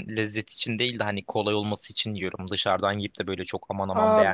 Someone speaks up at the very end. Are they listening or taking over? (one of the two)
taking over